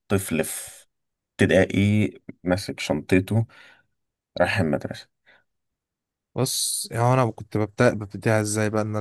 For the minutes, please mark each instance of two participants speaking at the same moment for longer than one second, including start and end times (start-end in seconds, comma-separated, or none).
none